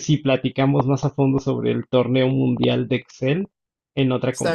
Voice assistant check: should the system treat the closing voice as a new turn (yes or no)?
yes